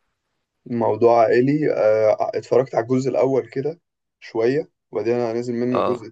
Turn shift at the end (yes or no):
no